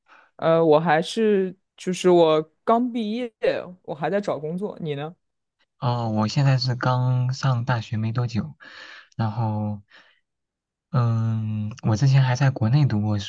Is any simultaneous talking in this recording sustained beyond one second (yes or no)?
no